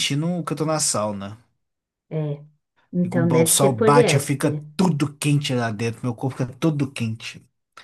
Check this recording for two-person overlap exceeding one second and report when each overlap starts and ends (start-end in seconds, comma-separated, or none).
3.0-4.6